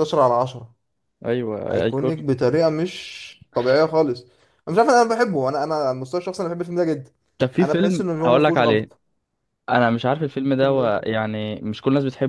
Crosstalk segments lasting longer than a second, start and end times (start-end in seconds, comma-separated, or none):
7.6-8.9